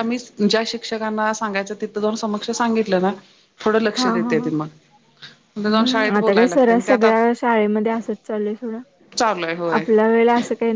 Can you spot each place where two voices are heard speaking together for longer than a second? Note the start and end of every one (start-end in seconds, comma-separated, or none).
5.7-7.2